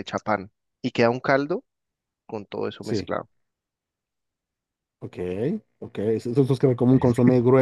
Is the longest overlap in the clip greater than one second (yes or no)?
no